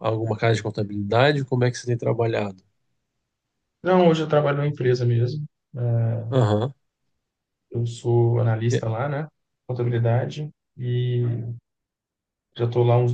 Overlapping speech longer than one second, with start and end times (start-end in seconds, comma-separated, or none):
none